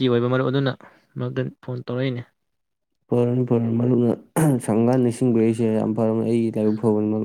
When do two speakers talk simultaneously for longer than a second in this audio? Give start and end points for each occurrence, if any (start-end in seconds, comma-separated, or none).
none